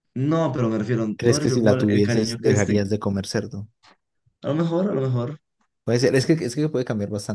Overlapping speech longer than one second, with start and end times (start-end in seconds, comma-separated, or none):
1.1-2.8